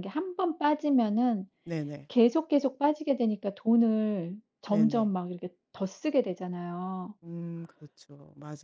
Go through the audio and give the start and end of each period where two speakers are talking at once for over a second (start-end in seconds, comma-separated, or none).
none